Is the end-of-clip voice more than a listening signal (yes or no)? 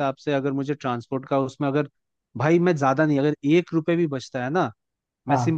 no